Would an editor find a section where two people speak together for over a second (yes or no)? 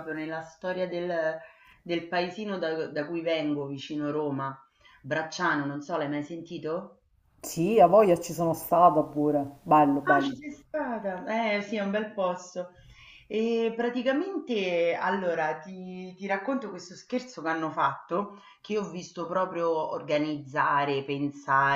no